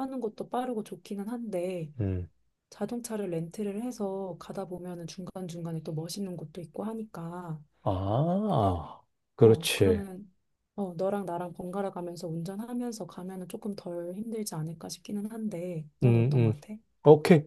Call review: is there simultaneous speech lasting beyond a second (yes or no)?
no